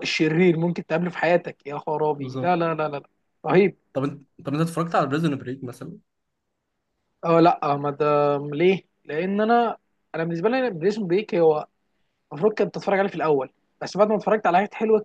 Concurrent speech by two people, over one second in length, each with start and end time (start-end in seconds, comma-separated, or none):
none